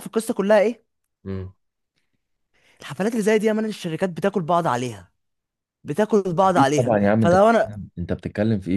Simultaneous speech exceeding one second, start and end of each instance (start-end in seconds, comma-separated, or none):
6.4-7.8